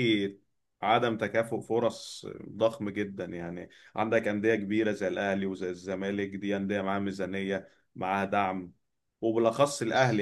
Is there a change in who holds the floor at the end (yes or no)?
no